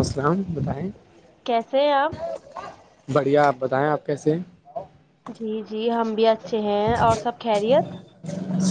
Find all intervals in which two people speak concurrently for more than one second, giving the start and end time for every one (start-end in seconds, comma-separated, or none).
none